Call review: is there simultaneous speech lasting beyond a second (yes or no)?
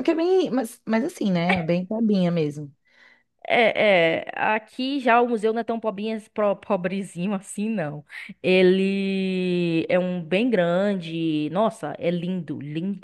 no